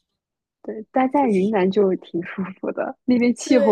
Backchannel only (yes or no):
no